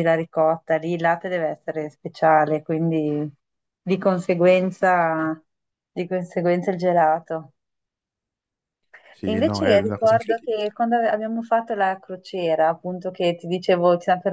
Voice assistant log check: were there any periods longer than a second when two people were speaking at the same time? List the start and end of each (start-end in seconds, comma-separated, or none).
9.2-10.7